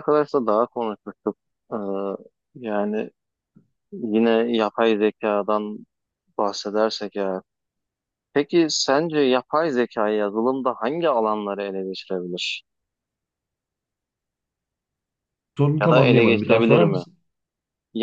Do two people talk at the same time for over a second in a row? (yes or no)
yes